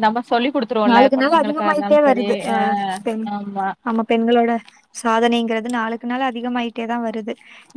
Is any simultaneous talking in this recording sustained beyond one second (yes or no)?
yes